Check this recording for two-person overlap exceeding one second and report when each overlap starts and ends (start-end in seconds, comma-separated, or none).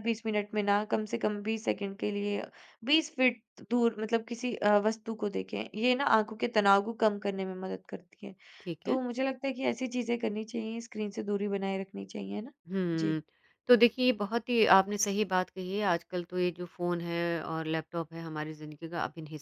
none